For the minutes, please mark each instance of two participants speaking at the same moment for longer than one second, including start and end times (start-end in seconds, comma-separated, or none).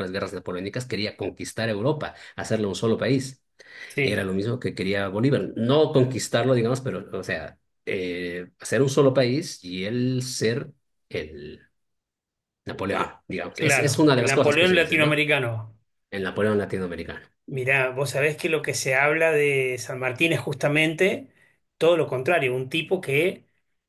13.6-15.2